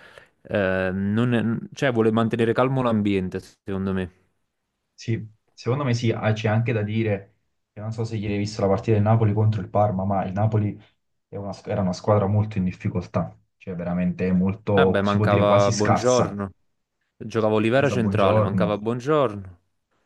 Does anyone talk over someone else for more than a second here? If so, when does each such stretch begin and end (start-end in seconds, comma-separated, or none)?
14.7-16.4, 17.4-18.8